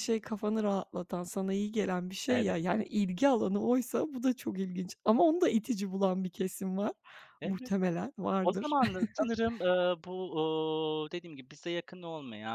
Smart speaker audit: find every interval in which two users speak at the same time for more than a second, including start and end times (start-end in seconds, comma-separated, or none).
none